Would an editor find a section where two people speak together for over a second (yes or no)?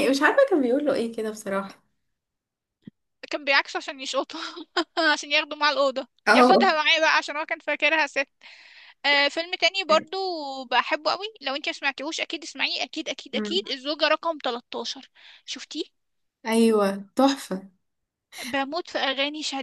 no